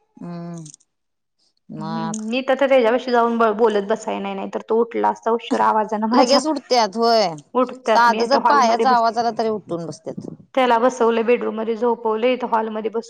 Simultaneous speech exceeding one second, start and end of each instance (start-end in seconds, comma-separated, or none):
7.8-9.1